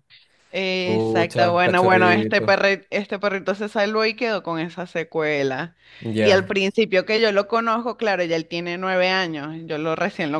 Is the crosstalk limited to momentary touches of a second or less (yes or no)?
no